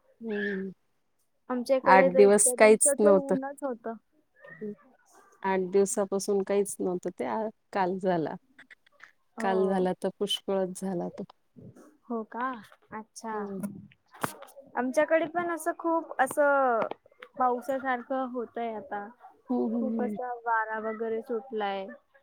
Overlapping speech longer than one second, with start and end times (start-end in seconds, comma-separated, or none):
1.9-3.4